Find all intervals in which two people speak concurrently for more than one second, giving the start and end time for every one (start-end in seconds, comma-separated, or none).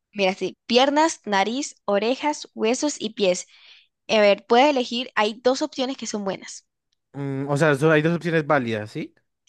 none